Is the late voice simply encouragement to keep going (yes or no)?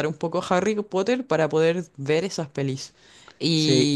yes